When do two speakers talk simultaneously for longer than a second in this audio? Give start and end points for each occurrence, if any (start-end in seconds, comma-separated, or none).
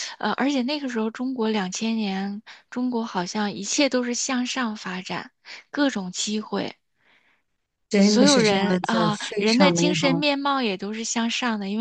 8.0-10.2